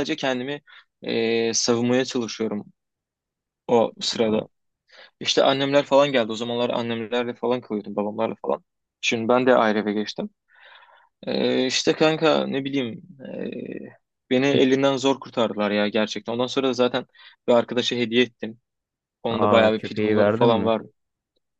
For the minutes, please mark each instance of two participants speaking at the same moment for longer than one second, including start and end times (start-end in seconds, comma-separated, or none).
19.3-20.7